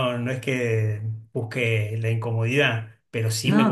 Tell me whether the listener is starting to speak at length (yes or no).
no